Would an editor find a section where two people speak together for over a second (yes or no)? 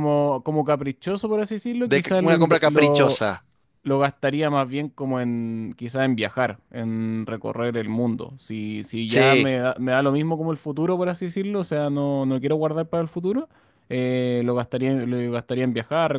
yes